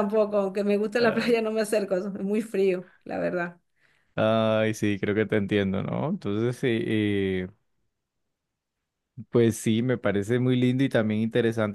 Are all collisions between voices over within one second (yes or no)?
yes